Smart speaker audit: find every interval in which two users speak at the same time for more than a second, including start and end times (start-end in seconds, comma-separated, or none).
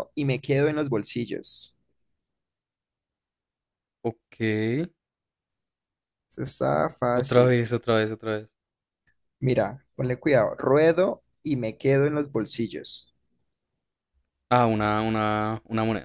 none